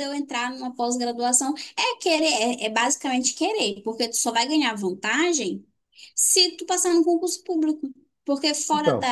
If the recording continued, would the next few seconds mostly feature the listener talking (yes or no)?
no